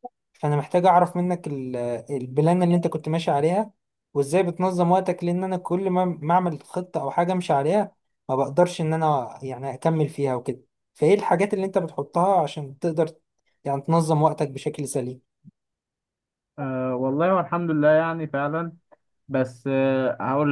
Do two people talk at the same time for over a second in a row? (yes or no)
no